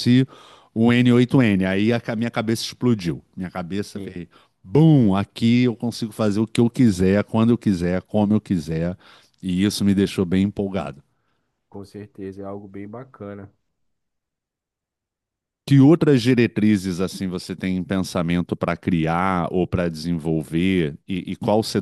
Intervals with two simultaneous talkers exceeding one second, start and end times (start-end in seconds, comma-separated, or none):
none